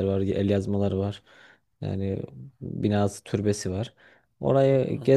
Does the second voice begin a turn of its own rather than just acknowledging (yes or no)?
no